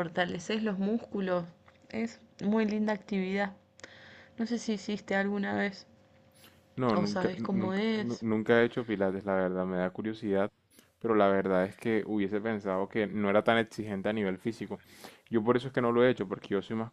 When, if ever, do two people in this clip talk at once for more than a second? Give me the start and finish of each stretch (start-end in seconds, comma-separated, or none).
6.9-8.2